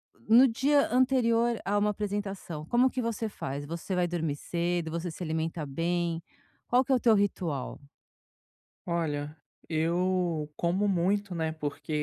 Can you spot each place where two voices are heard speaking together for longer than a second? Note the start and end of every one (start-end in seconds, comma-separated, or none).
none